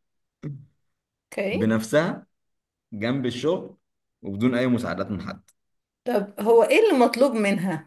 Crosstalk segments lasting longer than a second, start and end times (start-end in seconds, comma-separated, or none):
none